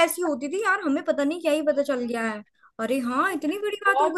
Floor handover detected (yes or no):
yes